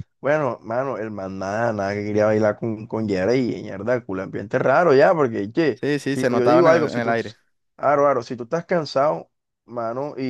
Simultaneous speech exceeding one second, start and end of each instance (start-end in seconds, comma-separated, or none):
5.7-7.1